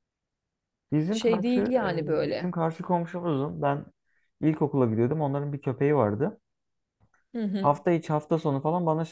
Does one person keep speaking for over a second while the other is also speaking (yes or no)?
yes